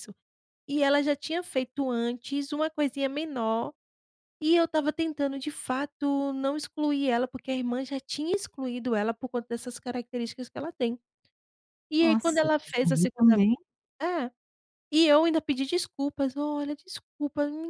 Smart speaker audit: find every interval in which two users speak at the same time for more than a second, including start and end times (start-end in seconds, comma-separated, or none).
12.0-13.4